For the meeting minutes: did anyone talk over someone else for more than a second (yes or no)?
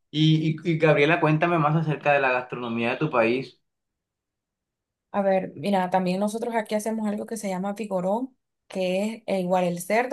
no